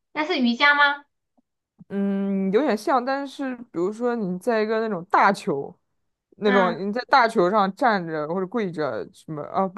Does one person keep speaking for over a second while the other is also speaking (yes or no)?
no